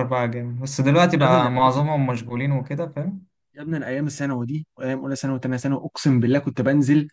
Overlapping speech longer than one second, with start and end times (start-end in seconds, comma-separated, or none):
none